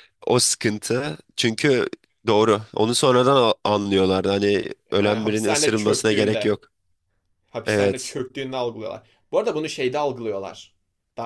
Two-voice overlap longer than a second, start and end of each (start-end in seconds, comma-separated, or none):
5.0-6.6